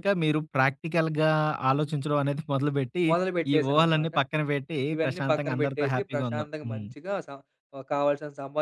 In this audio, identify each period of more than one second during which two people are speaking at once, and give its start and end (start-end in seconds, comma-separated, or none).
4.9-6.9